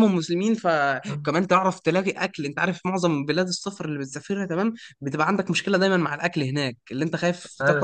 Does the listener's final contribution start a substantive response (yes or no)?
no